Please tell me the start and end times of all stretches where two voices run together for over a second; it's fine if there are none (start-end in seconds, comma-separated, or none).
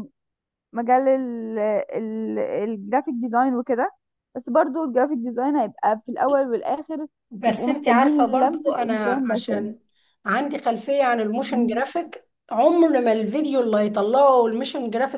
7.4-9.7